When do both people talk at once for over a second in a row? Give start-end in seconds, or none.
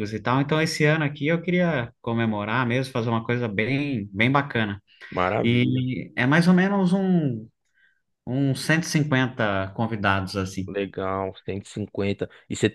none